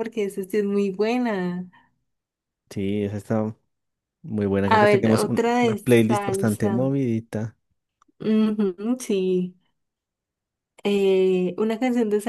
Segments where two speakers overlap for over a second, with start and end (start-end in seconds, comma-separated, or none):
4.7-6.9